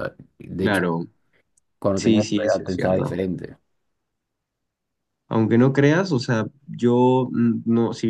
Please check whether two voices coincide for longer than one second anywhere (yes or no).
yes